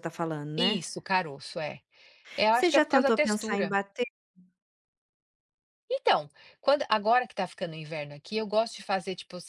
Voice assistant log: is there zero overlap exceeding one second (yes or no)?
no